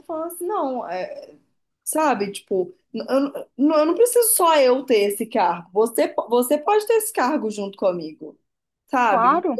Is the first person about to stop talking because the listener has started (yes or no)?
no